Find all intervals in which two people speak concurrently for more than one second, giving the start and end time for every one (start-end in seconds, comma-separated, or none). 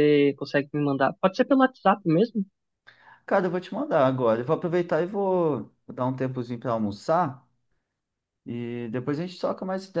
none